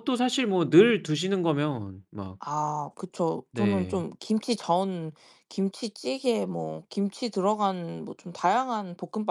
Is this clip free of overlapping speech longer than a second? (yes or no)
yes